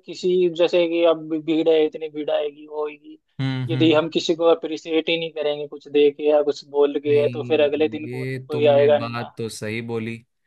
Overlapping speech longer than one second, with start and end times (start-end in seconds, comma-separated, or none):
7.1-9.3